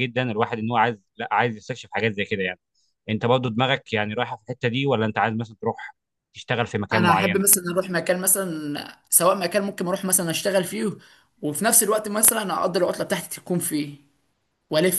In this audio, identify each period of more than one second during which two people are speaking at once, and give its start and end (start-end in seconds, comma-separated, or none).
none